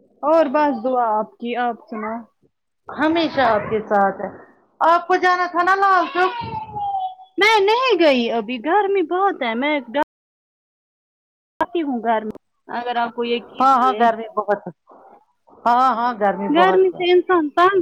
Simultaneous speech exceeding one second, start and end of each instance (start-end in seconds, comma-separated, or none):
none